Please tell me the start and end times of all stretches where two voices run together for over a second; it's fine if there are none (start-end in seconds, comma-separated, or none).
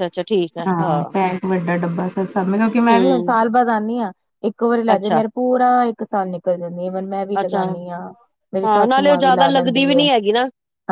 8.6-10.0